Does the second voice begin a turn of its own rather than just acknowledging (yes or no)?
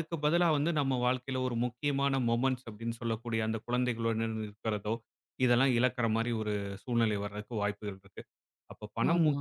no